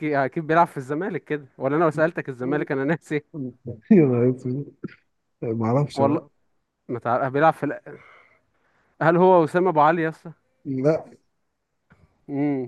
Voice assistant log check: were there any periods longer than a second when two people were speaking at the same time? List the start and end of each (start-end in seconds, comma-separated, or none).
none